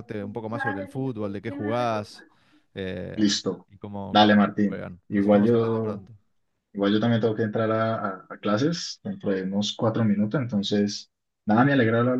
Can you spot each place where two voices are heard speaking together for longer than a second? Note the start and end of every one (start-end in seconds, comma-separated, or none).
4.1-6.0